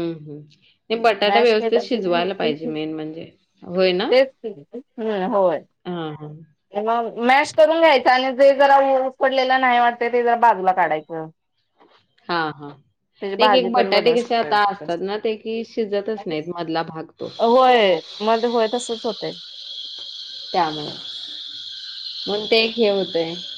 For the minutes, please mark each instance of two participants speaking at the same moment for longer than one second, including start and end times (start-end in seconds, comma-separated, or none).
13.4-14.9